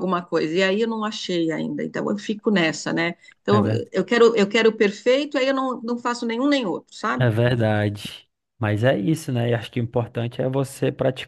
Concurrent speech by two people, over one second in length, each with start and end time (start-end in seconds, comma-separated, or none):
none